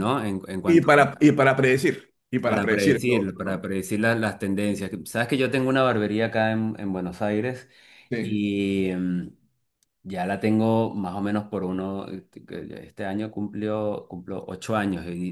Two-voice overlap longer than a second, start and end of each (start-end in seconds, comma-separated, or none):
2.4-3.6